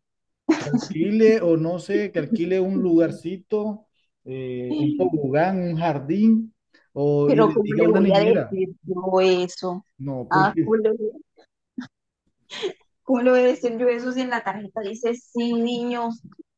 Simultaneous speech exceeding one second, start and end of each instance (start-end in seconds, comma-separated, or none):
7.2-8.6